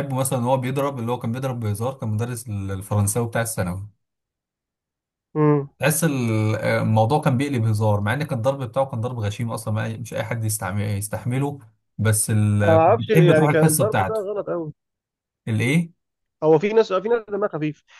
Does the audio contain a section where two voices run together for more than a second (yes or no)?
yes